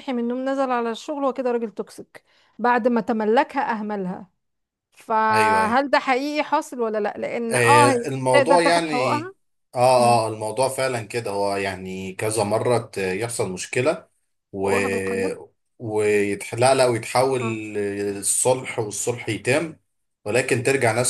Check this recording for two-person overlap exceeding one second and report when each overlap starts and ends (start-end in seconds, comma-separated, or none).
7.5-9.2